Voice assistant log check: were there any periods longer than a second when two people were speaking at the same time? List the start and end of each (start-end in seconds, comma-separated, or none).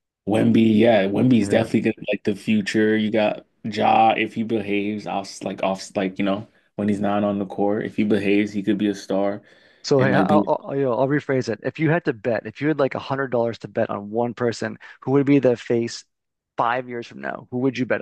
none